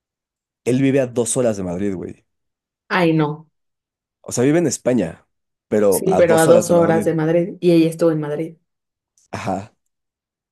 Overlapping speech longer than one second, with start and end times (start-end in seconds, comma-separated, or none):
5.9-7.1